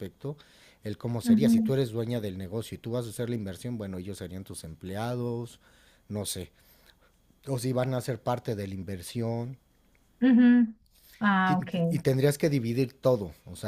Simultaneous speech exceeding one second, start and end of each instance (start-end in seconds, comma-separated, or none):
none